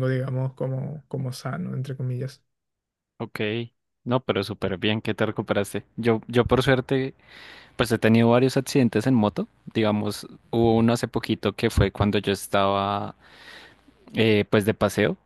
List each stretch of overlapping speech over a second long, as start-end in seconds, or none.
none